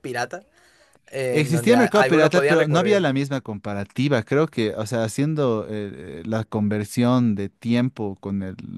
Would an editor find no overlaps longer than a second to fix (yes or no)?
no